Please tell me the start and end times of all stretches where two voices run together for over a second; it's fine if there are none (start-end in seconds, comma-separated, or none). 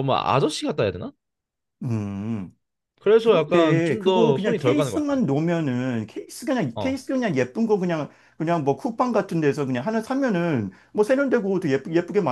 3.2-5.1